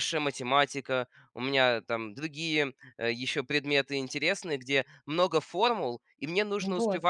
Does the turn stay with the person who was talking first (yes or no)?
yes